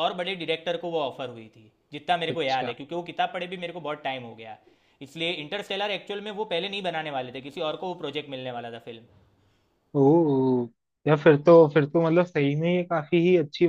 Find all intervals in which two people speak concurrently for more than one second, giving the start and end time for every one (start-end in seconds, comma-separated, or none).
none